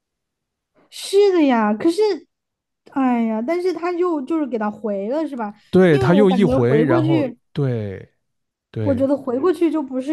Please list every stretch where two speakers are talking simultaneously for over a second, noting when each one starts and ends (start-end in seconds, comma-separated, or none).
5.9-7.4